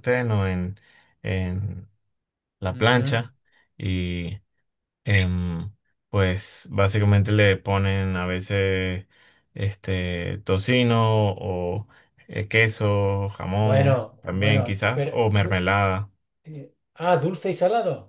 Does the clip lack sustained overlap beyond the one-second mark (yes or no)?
no